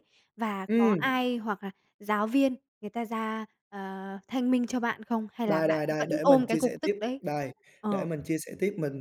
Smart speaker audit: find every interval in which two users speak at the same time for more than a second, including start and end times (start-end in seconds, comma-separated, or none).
5.5-7.2